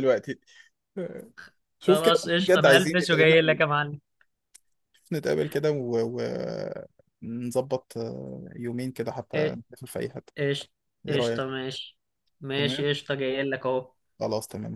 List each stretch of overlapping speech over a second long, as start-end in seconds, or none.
1.8-3.4